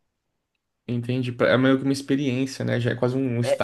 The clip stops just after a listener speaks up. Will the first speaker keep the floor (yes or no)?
no